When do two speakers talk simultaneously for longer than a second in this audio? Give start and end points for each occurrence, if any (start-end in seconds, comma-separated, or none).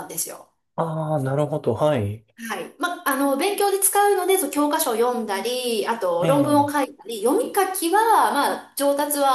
none